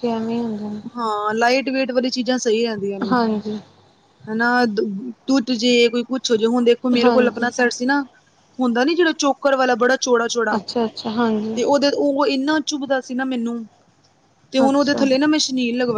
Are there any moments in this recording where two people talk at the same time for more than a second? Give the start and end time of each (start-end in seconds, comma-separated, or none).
none